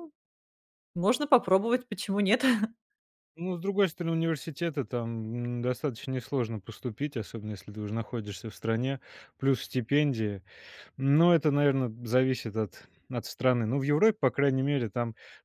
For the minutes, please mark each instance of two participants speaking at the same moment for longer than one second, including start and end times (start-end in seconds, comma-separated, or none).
none